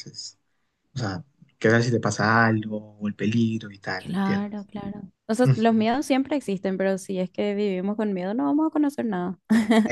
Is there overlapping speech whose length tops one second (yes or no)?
no